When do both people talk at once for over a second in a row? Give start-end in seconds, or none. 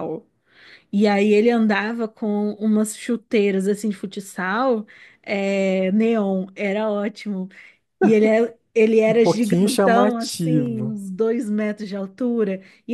9.1-11.0